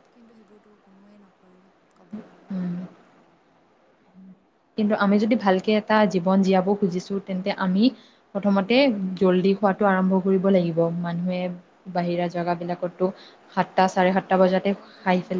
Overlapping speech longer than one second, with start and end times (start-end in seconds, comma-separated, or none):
none